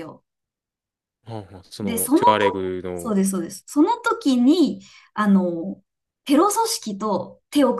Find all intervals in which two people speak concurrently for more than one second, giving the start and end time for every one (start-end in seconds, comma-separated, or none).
1.8-3.1